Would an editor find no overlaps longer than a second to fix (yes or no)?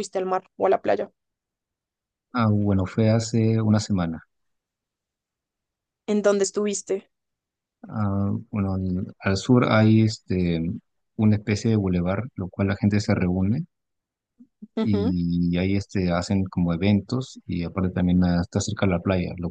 yes